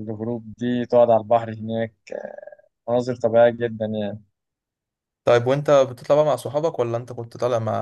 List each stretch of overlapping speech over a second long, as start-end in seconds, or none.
none